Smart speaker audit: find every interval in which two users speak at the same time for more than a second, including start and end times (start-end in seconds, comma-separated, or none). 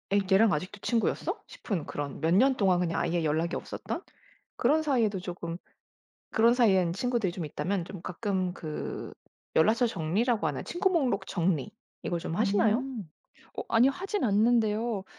none